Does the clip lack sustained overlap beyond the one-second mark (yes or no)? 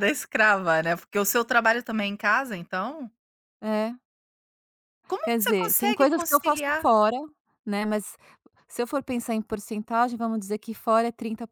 no